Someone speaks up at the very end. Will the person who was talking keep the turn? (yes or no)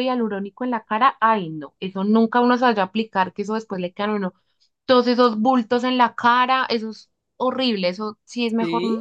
yes